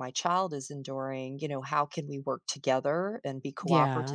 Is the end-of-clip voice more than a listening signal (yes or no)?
no